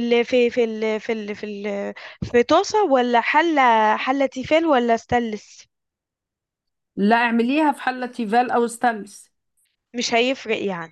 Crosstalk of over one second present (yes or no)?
no